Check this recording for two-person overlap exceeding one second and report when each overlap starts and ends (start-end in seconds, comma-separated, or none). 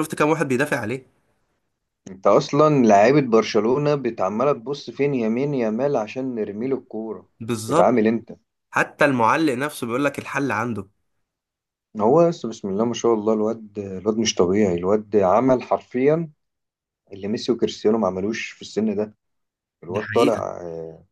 none